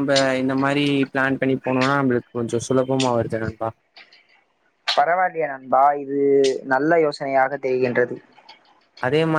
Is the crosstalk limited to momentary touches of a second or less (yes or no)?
yes